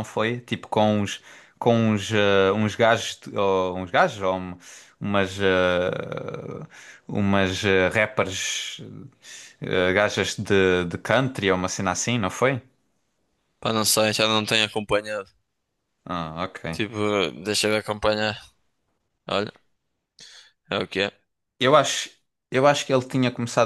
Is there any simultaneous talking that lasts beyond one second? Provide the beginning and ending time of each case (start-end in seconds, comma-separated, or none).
none